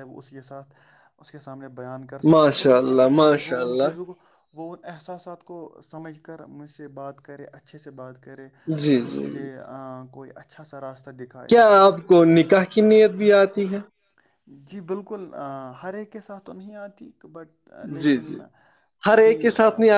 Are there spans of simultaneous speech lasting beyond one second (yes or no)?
yes